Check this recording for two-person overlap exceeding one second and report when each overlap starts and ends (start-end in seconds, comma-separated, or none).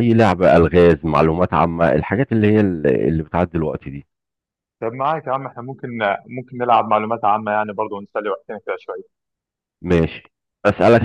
none